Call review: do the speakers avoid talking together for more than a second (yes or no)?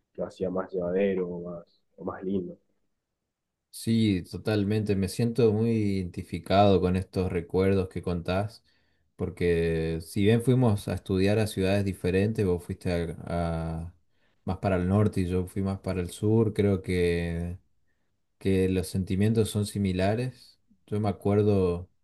yes